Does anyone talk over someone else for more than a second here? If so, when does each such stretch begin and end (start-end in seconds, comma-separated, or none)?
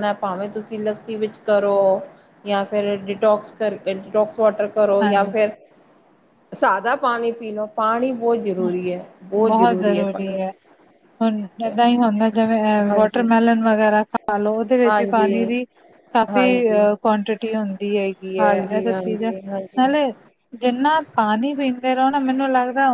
18.4-19.8